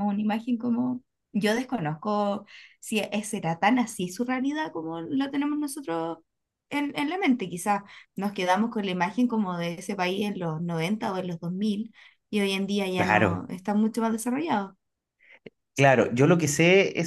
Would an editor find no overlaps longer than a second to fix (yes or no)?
yes